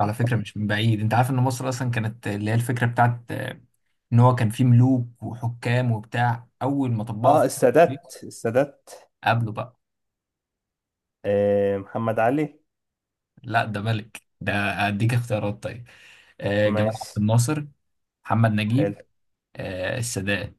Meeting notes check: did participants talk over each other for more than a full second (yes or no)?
no